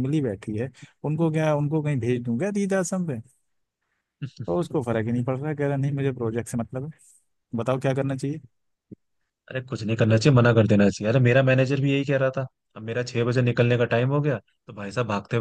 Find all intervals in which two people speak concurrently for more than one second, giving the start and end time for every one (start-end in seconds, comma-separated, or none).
none